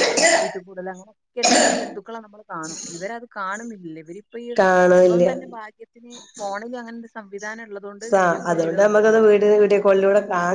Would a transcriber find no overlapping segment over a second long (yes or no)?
yes